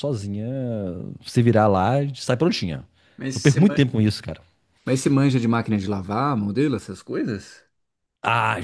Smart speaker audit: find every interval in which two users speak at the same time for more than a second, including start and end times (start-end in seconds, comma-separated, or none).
none